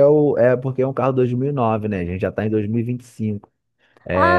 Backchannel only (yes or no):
no